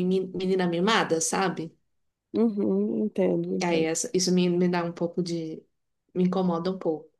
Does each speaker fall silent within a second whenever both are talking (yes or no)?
yes